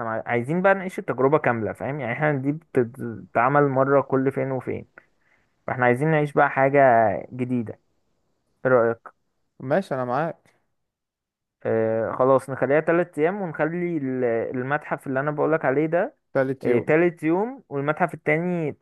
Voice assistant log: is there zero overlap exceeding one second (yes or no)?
yes